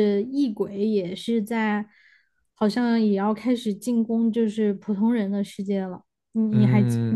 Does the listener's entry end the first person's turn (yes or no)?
yes